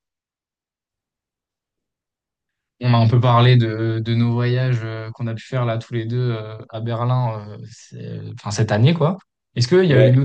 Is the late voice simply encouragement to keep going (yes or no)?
yes